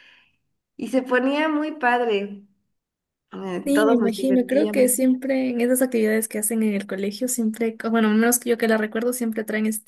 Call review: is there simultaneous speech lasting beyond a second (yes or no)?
yes